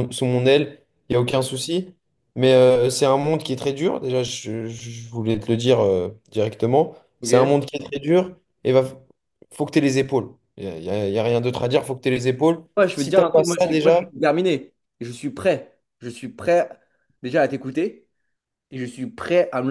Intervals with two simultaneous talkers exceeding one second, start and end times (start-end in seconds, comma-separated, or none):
12.8-14.1